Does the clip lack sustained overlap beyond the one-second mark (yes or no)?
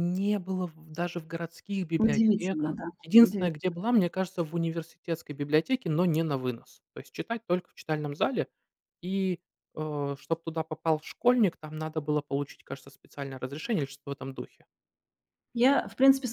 no